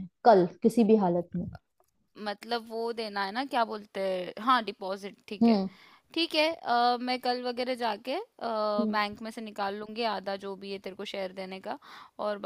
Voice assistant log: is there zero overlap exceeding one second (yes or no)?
yes